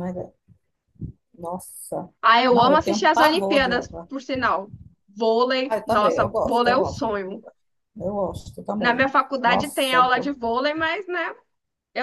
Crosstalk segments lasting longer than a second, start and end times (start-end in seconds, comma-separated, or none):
2.5-4.1, 5.7-7.4, 8.8-10.3